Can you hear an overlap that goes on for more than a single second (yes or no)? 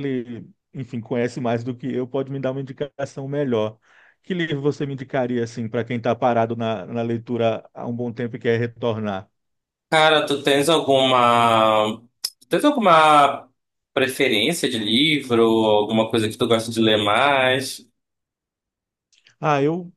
no